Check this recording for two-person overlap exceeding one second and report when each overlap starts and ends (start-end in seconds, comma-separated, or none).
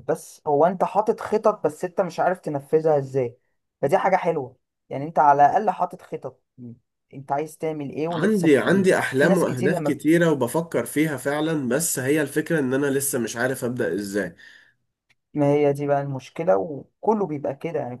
8.1-10.0